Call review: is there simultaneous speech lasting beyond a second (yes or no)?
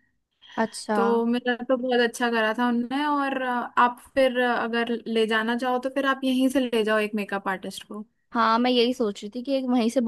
no